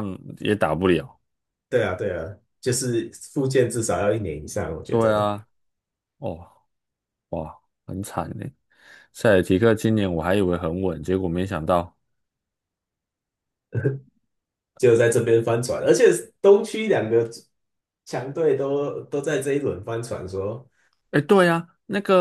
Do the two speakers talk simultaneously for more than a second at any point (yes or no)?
no